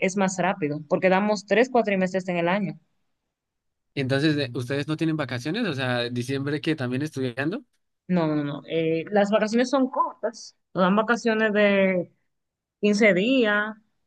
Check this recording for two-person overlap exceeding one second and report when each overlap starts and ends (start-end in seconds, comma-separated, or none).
none